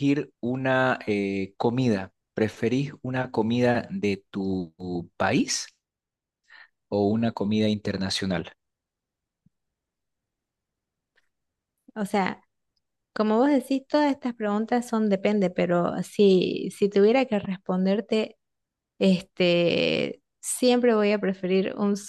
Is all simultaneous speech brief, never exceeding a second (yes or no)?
yes